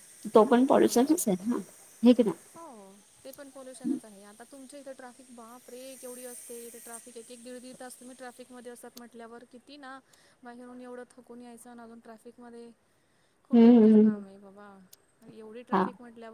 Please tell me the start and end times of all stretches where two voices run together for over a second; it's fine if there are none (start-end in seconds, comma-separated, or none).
none